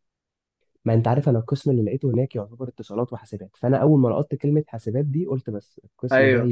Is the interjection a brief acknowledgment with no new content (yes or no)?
no